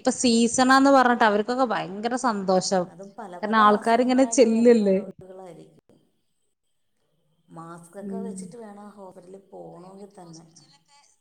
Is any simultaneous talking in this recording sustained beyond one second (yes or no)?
yes